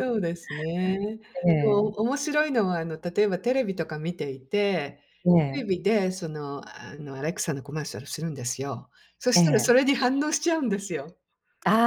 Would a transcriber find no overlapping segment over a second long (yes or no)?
yes